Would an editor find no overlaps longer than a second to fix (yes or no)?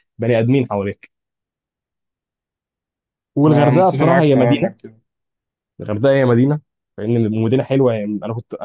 no